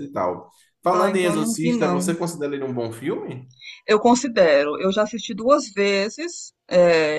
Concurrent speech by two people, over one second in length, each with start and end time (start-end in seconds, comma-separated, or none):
0.9-2.2